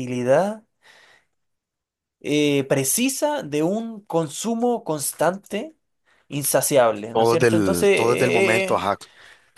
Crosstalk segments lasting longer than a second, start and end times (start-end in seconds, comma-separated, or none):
7.1-8.9